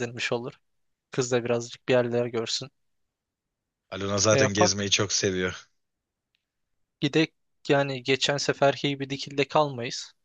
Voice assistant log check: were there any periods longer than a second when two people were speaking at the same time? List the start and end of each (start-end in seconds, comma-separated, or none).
none